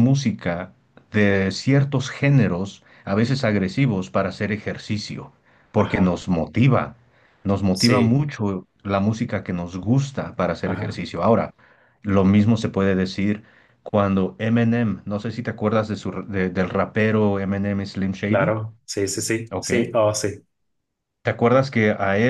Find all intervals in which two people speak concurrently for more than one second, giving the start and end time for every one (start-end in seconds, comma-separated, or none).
none